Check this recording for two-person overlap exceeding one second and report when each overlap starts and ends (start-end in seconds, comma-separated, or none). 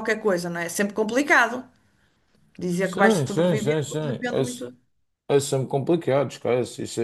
2.8-4.7